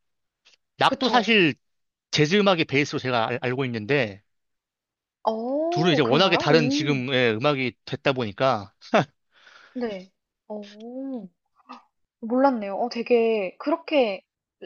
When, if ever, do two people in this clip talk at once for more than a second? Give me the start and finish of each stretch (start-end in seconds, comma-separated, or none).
5.7-7.0